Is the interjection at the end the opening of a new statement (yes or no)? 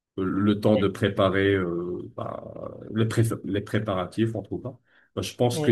no